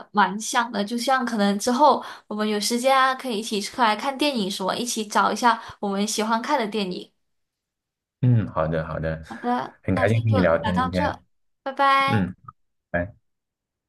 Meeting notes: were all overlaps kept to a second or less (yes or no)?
no